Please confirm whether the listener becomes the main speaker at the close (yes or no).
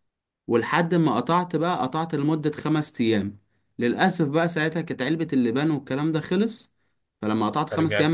no